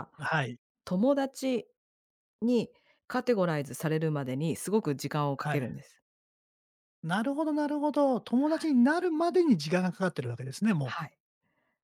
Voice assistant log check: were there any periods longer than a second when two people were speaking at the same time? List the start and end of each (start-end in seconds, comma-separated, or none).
none